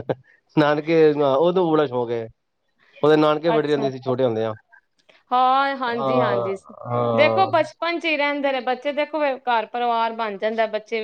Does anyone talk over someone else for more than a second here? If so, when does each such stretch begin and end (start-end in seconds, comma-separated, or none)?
none